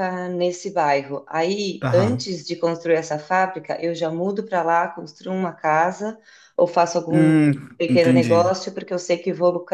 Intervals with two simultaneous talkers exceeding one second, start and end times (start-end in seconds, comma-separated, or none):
7.1-8.5